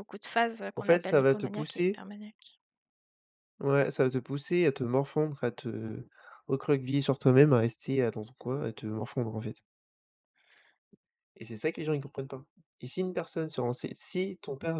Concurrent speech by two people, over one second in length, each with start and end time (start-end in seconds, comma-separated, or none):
0.8-2.0